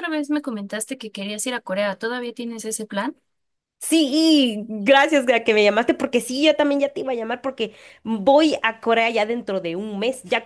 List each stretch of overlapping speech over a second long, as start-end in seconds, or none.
none